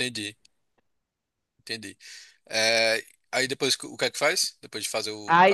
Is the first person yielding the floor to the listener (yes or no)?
yes